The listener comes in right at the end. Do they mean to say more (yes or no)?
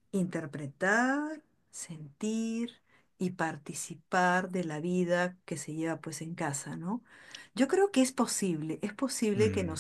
no